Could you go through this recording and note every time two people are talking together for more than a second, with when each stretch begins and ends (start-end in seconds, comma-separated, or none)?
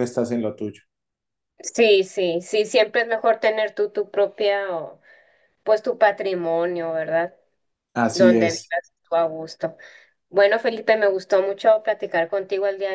none